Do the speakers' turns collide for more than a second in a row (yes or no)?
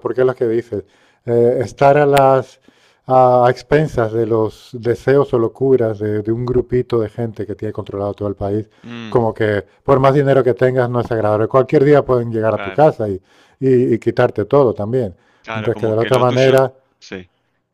yes